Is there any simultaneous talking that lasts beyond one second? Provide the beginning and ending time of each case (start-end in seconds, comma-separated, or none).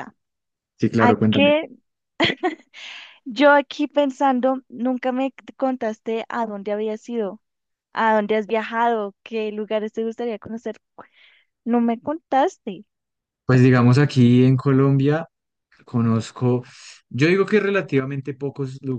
none